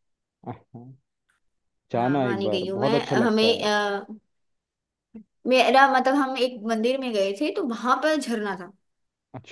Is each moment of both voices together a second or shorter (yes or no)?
no